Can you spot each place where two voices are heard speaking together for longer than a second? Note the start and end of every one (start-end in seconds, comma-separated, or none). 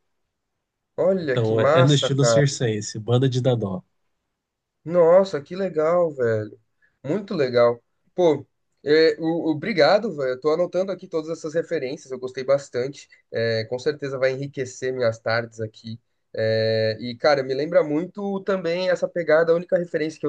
1.2-2.5